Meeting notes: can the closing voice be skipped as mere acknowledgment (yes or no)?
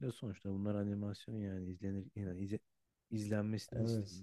yes